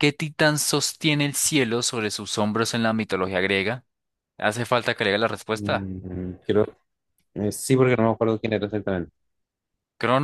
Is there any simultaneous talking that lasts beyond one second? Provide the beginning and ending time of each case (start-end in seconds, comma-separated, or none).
none